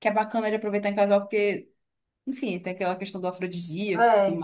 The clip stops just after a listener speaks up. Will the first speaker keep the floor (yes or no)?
no